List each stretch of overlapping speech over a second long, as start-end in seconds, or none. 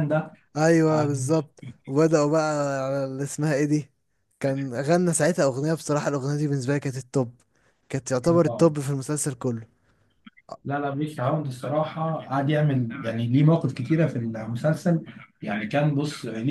none